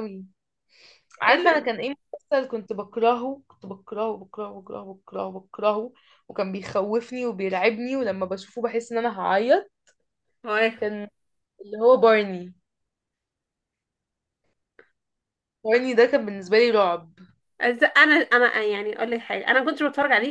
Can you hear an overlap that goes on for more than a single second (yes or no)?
no